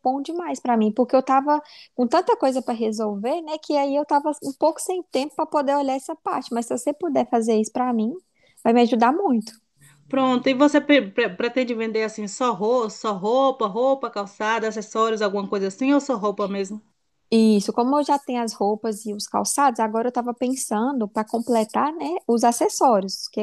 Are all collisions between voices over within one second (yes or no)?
yes